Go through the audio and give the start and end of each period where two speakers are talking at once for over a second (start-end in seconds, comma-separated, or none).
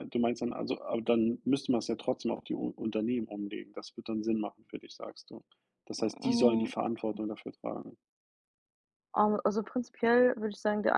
none